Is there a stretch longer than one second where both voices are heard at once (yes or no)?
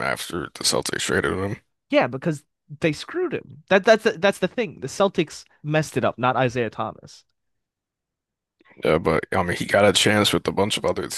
no